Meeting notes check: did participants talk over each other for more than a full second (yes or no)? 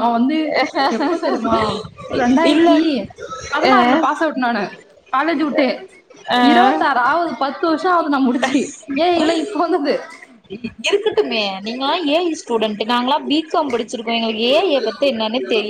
no